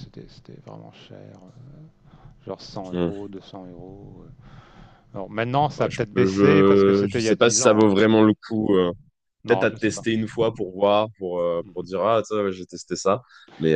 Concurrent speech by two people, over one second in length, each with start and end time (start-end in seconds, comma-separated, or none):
5.8-7.9